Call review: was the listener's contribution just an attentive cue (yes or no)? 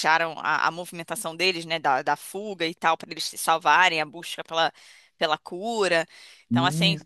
yes